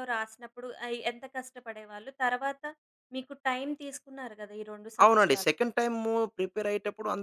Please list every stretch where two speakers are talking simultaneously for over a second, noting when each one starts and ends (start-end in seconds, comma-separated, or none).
none